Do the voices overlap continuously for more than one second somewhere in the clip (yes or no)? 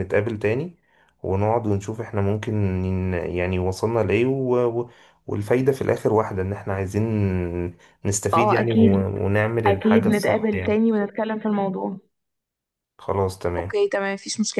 yes